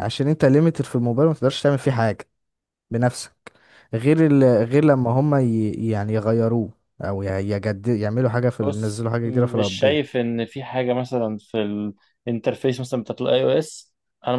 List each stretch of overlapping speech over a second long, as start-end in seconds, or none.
8.6-10.0